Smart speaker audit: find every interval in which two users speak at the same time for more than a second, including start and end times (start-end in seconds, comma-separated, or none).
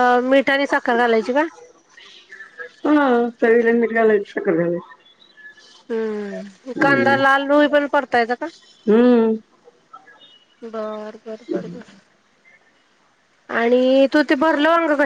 none